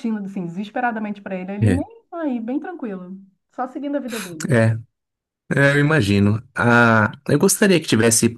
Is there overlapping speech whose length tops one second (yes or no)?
no